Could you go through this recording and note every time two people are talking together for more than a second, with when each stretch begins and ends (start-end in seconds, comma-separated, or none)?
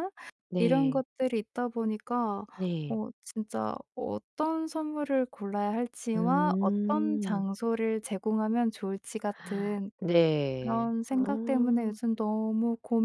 6.2-7.5, 10.6-11.8